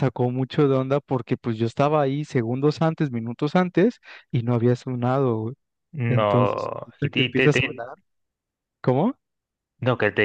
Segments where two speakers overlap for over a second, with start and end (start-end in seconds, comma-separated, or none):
6.1-7.8